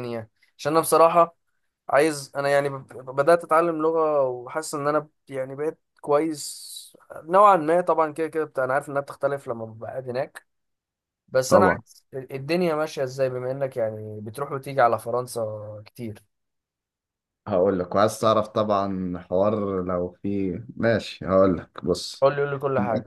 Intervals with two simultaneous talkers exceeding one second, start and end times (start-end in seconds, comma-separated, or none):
none